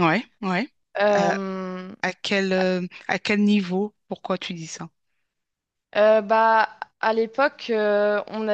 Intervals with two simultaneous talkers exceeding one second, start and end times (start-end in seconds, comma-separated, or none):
none